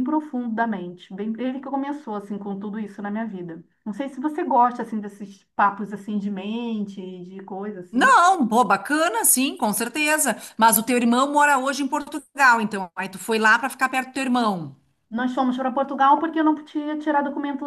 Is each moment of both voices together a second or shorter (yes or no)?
yes